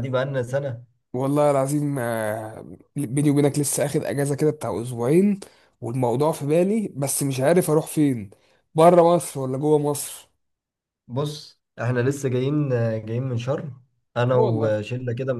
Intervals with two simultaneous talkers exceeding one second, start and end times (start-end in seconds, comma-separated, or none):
none